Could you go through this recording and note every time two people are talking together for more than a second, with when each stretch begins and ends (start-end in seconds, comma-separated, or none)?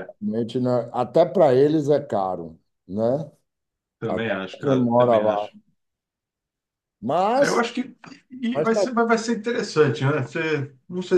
4.1-5.5